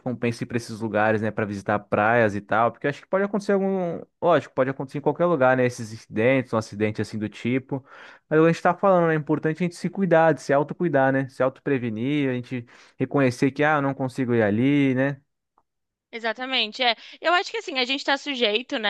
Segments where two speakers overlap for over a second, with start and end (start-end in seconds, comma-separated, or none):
none